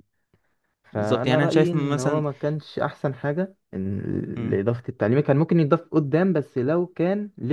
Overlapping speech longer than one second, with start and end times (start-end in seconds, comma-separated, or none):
0.9-2.2